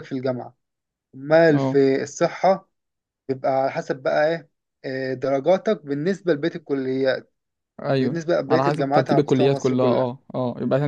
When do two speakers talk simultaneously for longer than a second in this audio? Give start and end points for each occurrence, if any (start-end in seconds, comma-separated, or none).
8.0-10.1